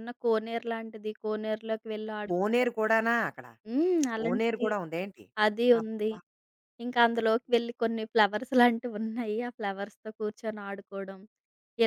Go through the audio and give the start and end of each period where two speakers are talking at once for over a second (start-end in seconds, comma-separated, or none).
none